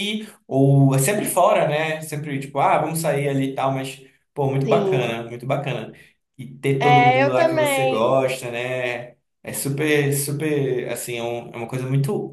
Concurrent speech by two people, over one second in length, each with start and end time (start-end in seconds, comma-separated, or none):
6.8-8.0